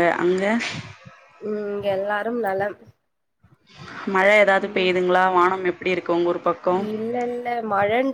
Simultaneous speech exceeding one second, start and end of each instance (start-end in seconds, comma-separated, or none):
none